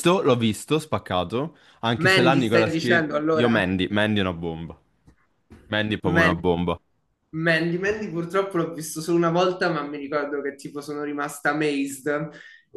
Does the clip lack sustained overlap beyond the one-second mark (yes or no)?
no